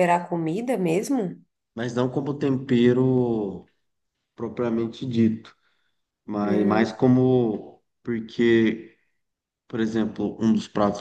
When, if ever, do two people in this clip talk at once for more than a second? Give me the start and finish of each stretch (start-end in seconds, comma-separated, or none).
none